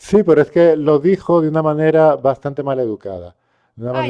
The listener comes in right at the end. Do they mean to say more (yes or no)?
yes